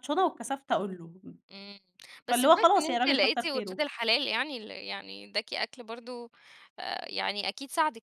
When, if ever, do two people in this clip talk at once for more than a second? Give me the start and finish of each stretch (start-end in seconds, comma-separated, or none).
2.3-3.8